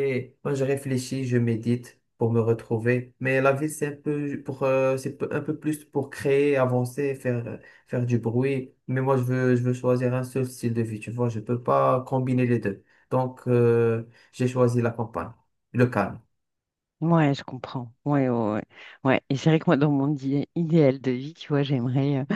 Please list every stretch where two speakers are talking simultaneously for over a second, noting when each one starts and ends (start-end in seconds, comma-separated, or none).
none